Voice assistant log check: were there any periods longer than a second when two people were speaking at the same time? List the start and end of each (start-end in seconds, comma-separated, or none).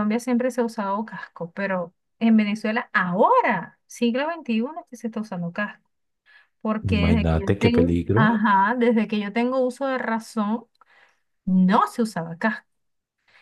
6.8-8.3